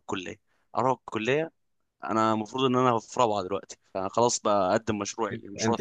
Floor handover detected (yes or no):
yes